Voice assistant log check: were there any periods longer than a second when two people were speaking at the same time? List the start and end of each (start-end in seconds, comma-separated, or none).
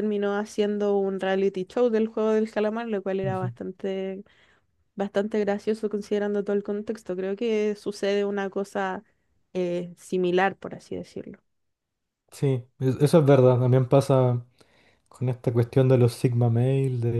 none